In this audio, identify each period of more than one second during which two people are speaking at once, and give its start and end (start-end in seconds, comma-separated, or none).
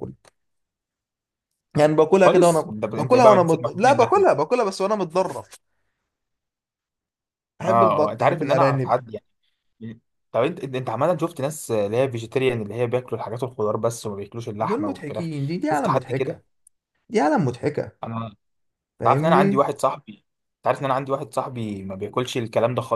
2.2-4.3, 7.6-8.9, 14.6-16.4